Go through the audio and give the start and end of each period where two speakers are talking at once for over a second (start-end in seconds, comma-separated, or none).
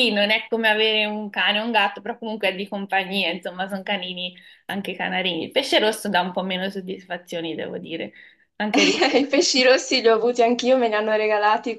none